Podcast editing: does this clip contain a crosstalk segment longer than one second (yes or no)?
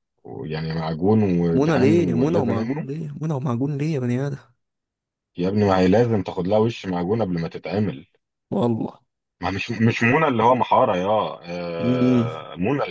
yes